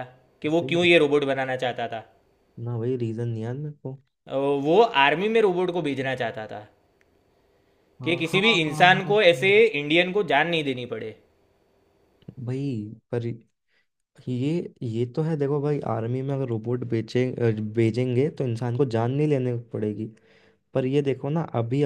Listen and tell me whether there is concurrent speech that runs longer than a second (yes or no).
yes